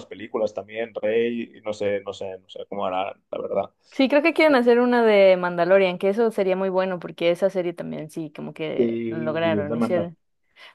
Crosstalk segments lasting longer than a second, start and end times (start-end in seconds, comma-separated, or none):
8.8-10.1